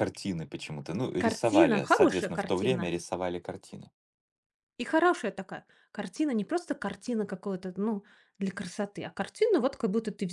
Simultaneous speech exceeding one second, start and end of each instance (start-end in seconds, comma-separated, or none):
1.2-2.9